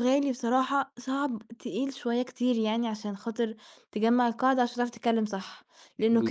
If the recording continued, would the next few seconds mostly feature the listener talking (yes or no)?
yes